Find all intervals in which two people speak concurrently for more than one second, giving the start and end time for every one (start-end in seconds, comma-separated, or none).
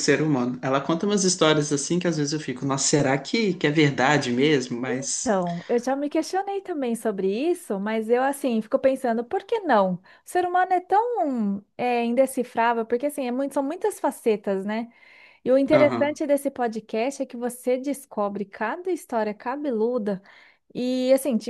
none